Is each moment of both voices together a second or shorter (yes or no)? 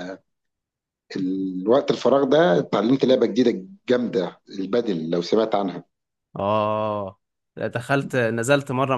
yes